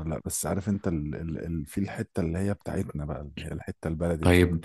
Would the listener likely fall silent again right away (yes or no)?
no